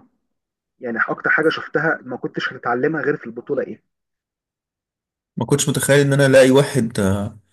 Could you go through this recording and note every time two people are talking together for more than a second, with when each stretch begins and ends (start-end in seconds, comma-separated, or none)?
none